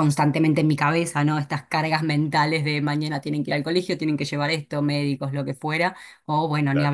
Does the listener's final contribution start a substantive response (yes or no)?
no